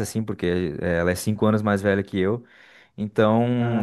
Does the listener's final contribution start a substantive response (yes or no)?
no